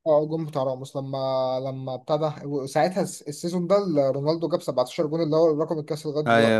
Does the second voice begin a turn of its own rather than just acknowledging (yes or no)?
yes